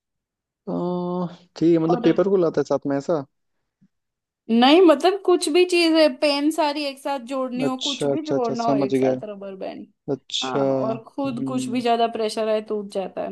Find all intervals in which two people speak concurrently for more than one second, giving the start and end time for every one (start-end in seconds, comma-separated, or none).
7.6-9.1